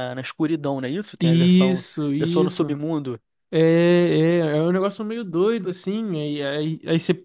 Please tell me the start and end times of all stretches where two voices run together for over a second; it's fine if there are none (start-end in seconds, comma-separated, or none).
1.2-2.8